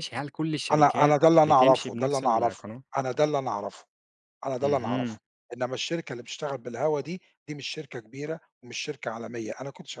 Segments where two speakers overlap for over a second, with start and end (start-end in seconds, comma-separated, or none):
0.7-2.8